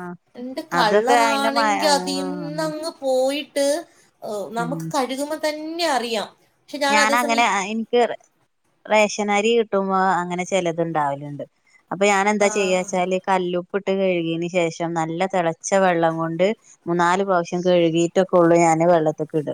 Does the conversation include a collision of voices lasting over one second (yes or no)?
yes